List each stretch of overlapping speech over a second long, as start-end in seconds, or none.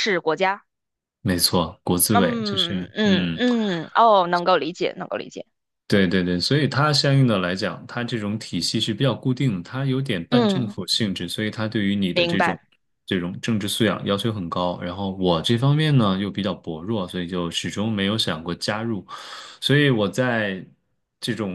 2.1-3.4